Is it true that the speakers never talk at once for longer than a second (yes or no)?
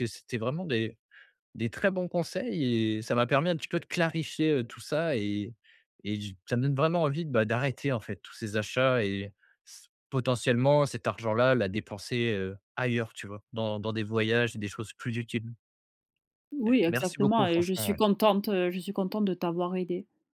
no